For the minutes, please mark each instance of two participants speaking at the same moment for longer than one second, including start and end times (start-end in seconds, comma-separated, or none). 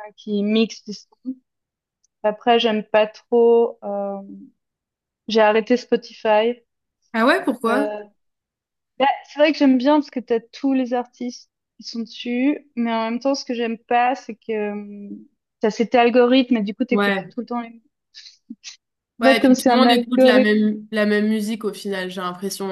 19.2-20.5